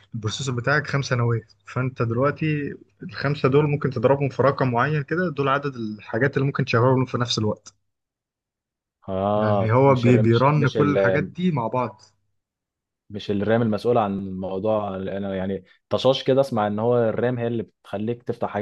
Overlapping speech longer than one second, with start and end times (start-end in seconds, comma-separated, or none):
9.4-11.0